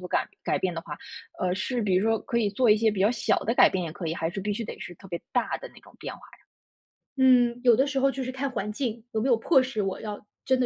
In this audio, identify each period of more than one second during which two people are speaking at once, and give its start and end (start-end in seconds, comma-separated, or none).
none